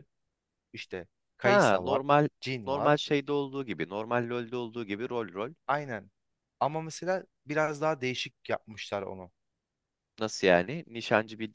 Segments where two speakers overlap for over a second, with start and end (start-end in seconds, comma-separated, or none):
none